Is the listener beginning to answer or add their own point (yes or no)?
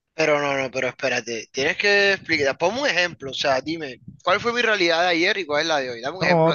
yes